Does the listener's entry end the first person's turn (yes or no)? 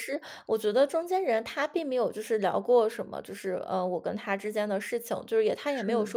no